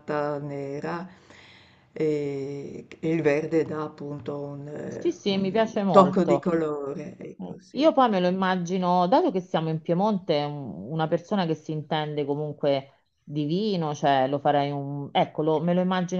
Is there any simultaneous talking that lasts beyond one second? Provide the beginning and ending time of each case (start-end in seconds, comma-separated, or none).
4.8-6.5